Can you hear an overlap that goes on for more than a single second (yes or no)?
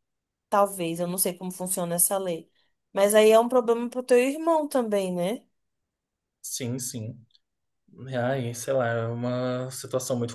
no